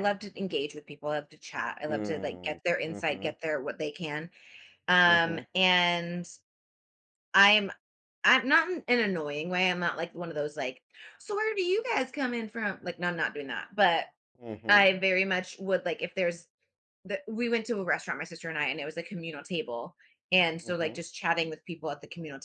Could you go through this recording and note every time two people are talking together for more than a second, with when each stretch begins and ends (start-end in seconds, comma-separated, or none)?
1.9-3.3